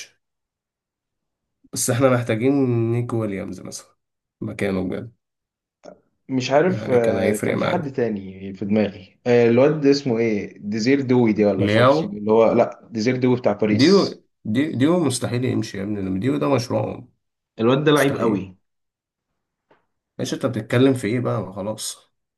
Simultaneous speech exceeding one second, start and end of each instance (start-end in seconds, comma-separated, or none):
6.7-7.9